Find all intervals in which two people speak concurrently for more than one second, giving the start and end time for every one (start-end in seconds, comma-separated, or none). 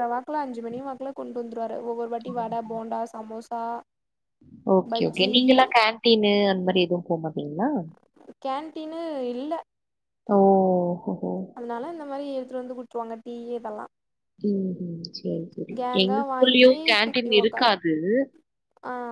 15.8-17.7